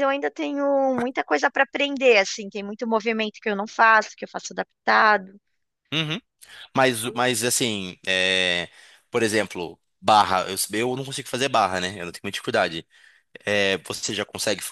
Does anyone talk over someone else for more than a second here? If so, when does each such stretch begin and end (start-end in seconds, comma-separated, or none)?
none